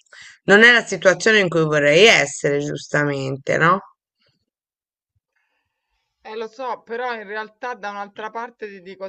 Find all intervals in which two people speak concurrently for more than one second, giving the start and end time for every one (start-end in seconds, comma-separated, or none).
none